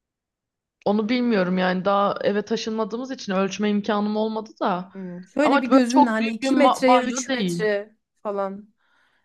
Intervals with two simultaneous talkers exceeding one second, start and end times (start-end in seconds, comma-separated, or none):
5.4-7.7